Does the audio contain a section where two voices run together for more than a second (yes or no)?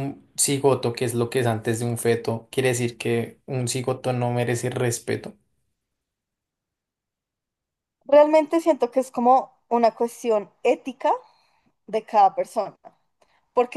no